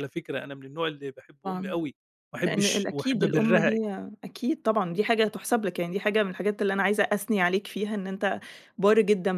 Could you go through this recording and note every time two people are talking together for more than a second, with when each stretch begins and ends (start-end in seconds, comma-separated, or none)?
2.4-3.7